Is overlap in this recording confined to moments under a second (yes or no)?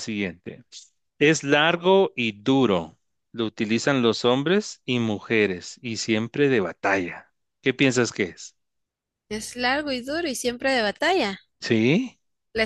yes